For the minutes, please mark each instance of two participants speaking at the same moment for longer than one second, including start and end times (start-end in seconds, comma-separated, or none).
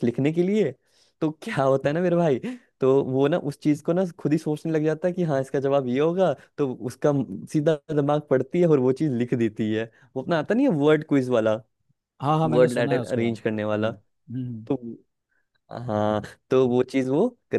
12.4-13.9